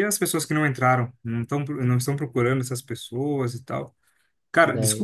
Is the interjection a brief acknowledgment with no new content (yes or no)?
yes